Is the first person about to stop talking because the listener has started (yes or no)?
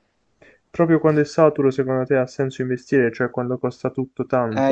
yes